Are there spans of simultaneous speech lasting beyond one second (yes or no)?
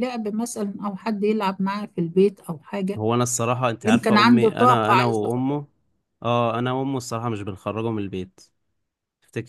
yes